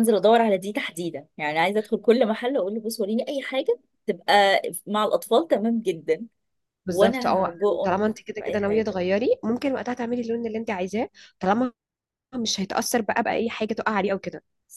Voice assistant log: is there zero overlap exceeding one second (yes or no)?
no